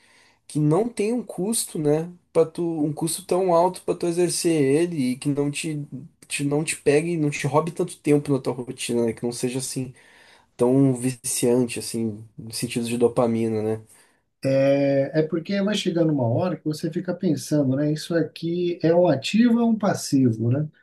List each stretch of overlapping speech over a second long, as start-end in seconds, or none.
none